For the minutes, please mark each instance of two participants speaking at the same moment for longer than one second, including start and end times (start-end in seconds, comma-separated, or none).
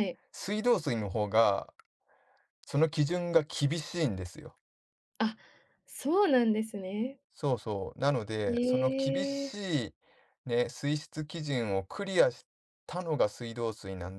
none